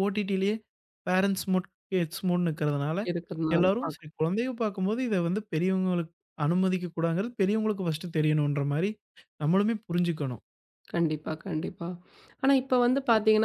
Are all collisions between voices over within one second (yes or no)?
yes